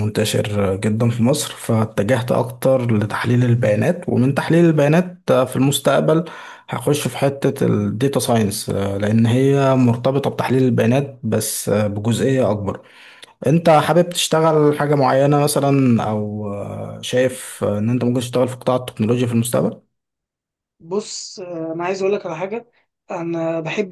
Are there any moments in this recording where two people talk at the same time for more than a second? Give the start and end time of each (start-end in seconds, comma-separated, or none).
none